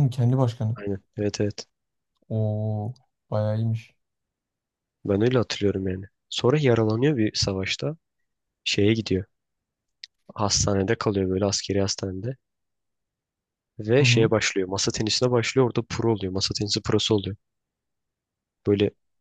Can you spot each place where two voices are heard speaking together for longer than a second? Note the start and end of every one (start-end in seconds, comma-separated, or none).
none